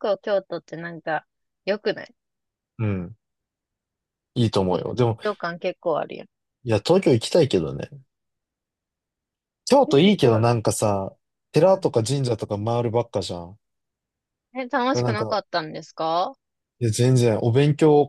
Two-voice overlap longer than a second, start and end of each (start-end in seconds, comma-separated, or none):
none